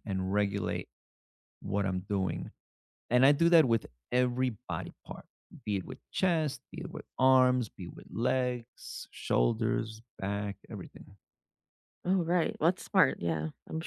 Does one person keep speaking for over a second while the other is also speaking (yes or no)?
no